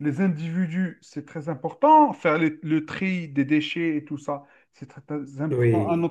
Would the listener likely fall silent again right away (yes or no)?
yes